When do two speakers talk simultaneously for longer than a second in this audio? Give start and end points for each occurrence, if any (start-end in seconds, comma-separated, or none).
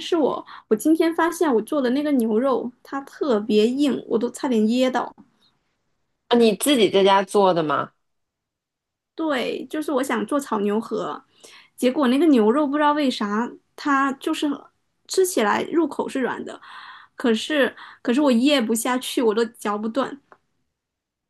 none